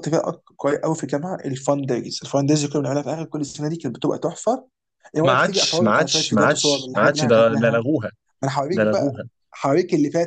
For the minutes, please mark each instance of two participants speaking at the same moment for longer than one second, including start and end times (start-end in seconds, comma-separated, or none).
5.2-7.8